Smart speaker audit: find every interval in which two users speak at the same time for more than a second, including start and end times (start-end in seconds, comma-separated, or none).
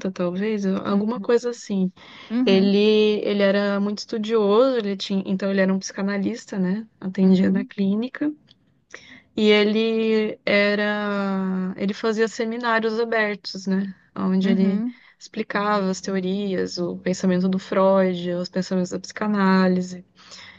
none